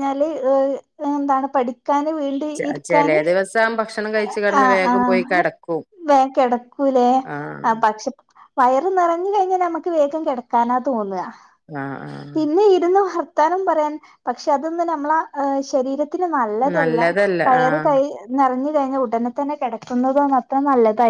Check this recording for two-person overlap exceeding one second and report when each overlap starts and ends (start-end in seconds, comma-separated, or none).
none